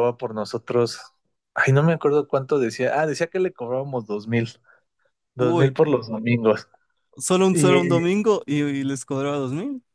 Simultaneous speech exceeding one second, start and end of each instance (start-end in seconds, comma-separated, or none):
none